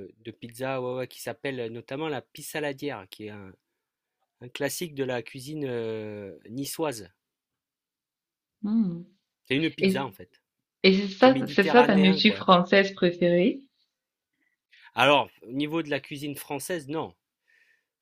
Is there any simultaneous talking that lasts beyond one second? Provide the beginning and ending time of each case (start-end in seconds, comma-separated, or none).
11.2-12.5